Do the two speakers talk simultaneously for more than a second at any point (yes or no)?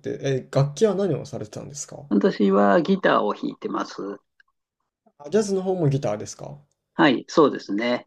no